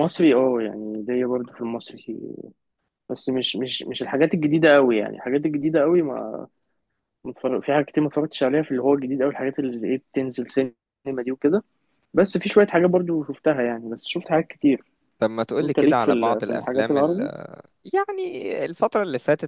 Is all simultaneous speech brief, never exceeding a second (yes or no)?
no